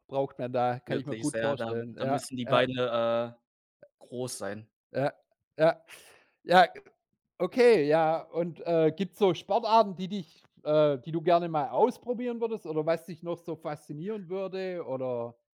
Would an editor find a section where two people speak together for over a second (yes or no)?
yes